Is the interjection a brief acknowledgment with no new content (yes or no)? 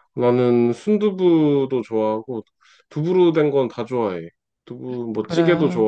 yes